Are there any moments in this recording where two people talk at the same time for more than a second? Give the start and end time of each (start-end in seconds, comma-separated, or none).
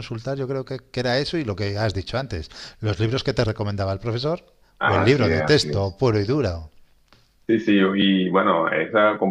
4.8-6.0